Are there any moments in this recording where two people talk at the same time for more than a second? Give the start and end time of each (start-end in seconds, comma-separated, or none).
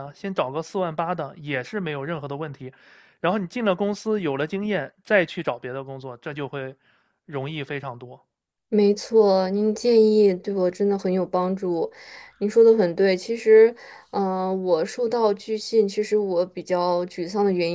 none